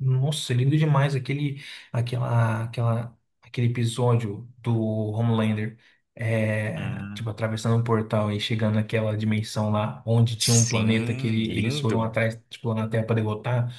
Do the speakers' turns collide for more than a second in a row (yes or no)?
yes